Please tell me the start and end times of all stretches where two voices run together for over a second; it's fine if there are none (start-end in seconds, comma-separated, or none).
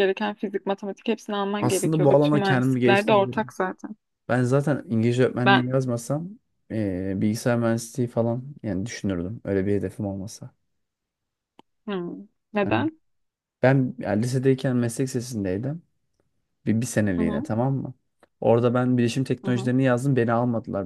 1.6-3.5